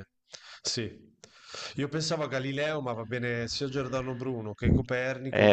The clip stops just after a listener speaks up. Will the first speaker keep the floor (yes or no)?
no